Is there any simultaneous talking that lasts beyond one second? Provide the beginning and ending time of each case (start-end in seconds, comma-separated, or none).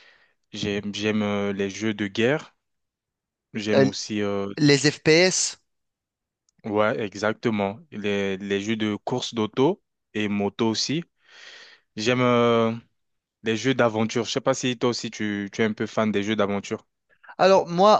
none